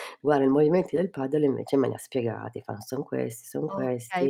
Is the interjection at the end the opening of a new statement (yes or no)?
yes